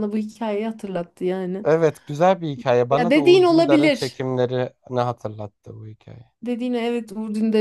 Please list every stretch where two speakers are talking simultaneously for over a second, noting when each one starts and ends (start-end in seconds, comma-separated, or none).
2.9-4.2